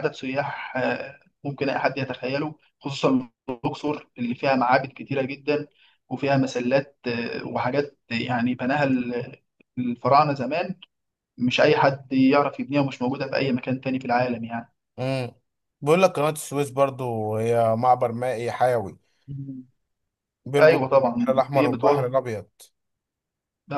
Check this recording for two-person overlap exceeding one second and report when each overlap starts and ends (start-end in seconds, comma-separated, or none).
20.6-22.1